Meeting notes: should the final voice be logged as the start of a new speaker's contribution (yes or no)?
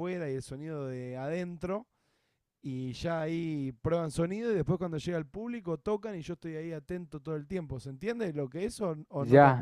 yes